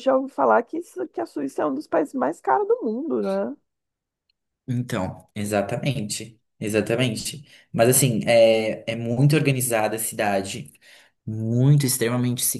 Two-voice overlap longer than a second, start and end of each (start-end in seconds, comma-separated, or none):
none